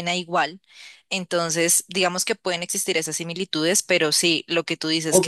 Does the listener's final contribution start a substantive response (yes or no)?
yes